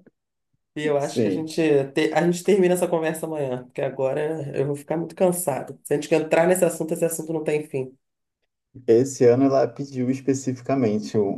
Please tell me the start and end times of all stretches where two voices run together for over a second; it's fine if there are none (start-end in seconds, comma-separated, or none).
none